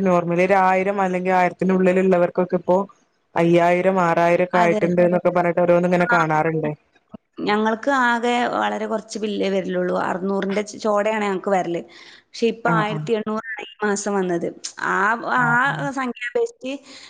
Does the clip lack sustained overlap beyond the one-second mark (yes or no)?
yes